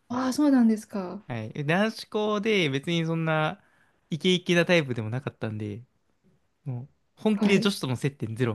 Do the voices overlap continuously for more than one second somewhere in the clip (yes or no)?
no